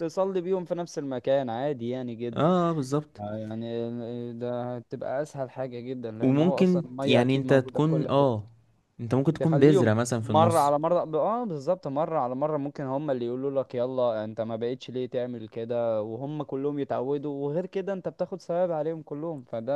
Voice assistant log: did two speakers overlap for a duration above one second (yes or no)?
yes